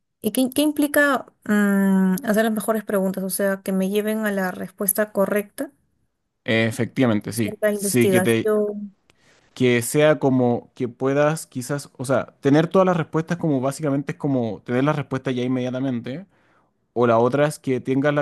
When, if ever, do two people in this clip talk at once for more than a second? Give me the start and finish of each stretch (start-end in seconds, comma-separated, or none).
7.3-8.5